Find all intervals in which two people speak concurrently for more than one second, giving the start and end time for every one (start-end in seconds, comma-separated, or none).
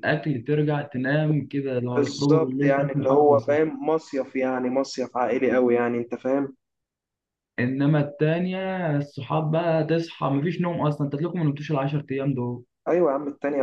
2.0-3.6